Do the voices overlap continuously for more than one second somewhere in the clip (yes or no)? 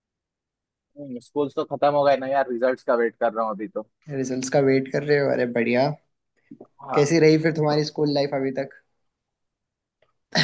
no